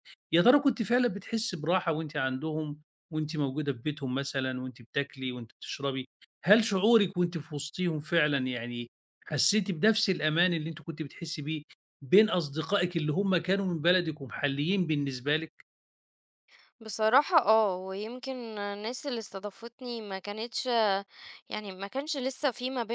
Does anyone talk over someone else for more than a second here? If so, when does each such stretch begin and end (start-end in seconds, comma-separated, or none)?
none